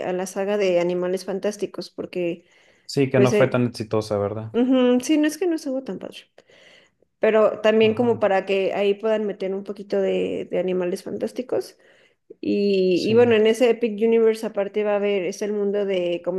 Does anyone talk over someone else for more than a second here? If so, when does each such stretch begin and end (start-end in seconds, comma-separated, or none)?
none